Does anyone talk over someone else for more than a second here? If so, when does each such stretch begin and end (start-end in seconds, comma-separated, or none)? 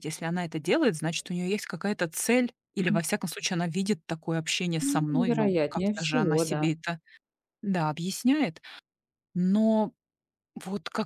4.8-6.6